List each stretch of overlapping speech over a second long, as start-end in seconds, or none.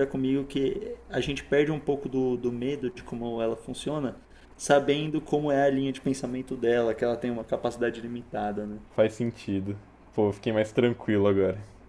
none